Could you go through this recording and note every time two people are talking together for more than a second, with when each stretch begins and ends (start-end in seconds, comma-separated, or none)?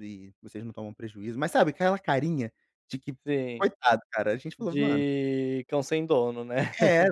none